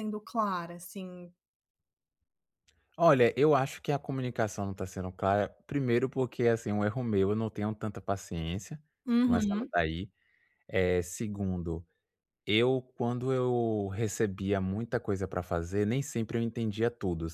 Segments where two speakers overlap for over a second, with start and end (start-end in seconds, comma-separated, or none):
none